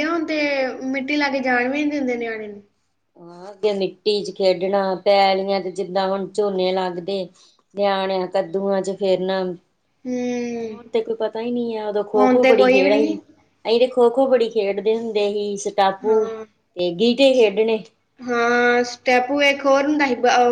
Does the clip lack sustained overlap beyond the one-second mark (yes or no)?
yes